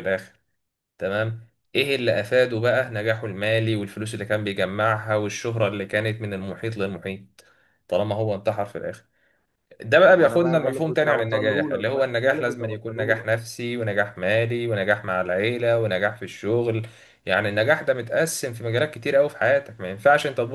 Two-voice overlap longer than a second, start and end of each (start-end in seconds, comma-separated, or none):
10.1-13.3